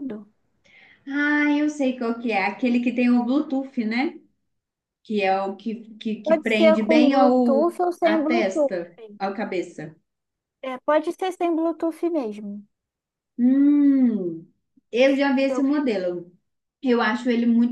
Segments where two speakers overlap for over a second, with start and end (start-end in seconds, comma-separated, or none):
6.2-8.8